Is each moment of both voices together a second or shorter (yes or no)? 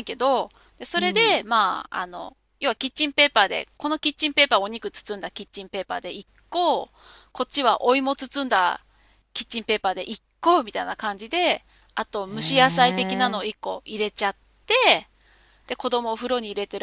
no